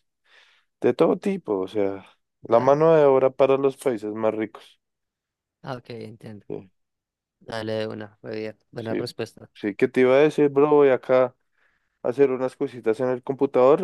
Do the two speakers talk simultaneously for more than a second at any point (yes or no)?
no